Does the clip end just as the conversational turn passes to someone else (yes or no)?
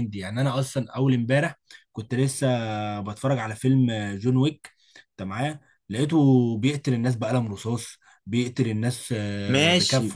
yes